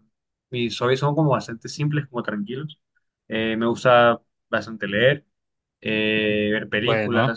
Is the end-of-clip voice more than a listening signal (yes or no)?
no